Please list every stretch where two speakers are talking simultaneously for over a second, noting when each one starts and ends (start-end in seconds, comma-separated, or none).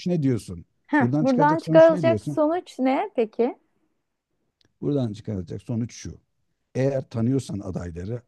1.0-2.4